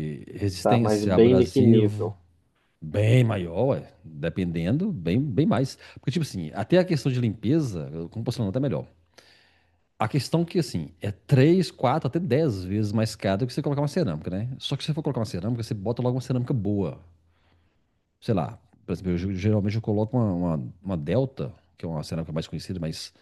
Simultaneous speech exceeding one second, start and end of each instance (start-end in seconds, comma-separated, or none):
0.6-2.1